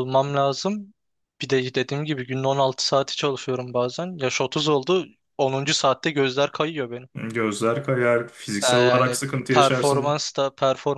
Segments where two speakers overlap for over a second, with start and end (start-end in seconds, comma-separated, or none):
8.7-10.2